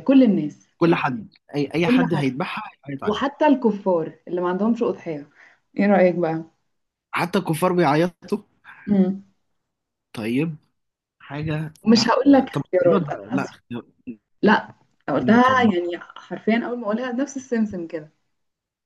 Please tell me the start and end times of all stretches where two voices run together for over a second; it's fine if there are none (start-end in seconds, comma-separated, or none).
11.9-13.6